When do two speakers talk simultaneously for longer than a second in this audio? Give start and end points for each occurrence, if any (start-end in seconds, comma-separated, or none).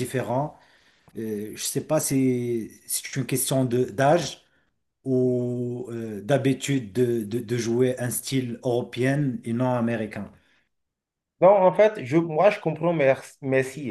none